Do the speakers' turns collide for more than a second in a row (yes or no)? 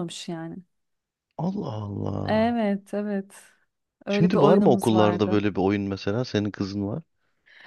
yes